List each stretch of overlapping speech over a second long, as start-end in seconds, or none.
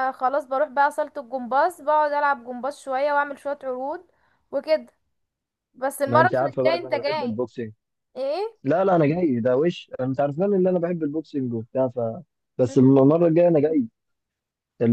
6.0-7.4